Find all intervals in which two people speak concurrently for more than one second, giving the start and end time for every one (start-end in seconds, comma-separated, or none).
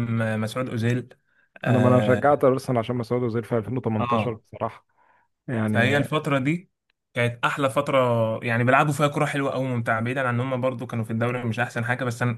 none